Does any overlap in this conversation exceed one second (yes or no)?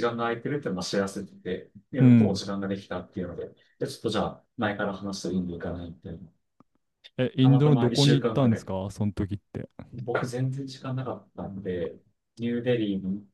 yes